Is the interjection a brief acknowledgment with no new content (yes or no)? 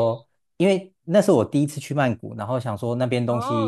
yes